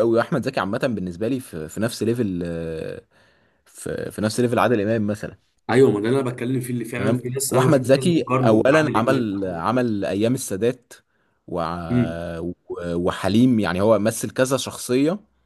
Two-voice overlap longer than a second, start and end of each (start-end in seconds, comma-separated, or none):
7.0-9.3